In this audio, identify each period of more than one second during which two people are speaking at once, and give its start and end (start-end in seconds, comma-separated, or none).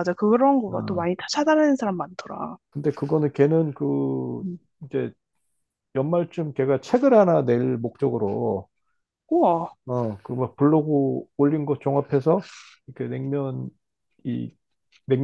none